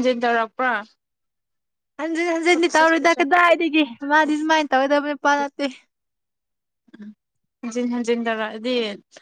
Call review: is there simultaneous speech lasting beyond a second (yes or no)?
yes